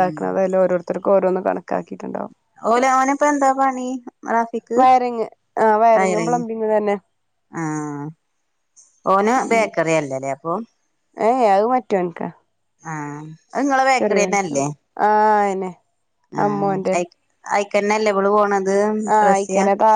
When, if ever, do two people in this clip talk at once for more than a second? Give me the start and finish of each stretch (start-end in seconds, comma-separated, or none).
none